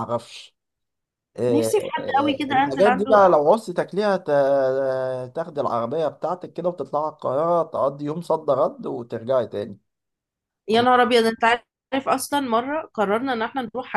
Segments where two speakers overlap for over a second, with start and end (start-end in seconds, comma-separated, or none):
1.5-3.1